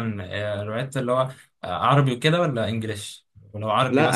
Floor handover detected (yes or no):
yes